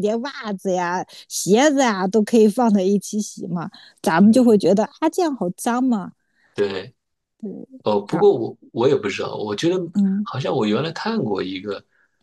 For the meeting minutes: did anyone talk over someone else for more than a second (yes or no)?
no